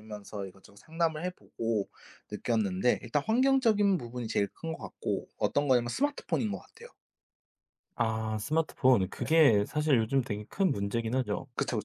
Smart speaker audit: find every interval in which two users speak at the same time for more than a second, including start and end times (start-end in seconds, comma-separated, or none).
none